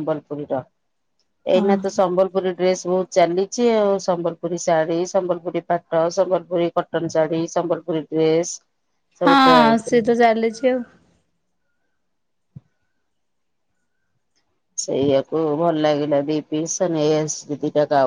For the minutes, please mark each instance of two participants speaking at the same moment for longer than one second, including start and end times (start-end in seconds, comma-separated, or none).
none